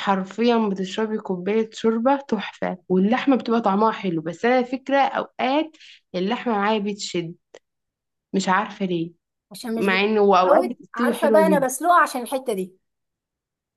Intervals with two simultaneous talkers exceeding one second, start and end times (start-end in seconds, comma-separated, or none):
9.8-11.8